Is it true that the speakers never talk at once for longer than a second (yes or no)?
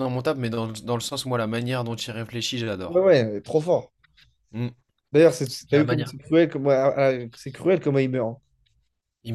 yes